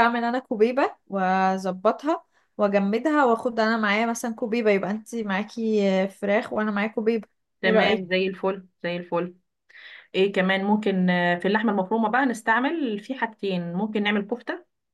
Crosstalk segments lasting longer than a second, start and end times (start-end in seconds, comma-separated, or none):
none